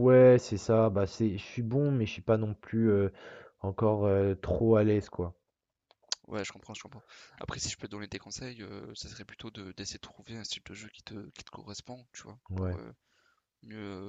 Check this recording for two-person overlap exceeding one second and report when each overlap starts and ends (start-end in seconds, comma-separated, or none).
none